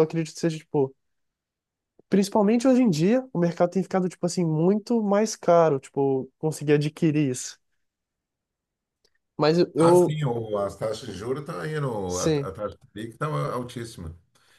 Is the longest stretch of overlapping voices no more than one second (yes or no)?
yes